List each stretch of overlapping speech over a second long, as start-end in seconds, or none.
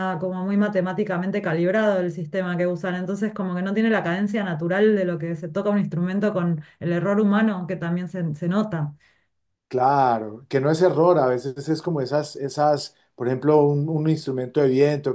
none